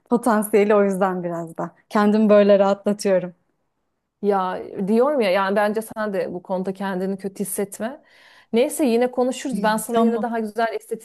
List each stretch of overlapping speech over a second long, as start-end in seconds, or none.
none